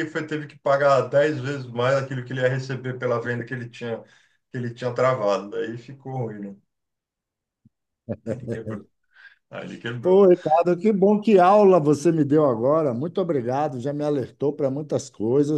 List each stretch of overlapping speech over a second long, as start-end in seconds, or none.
none